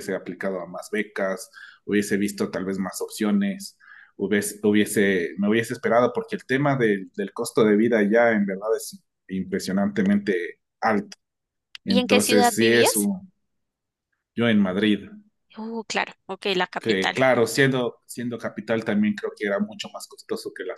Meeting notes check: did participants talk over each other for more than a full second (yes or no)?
yes